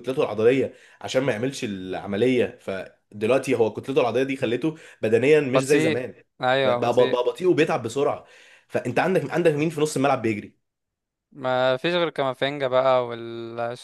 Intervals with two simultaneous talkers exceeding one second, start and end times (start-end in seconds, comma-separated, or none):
none